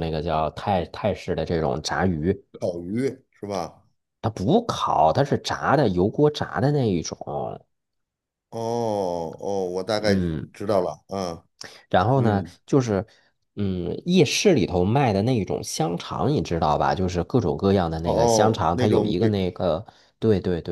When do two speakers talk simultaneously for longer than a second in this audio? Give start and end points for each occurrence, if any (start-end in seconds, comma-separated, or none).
18.0-19.3